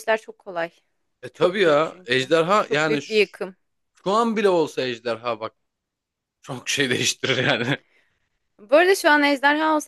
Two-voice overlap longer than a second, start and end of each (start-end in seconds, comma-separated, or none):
1.3-3.4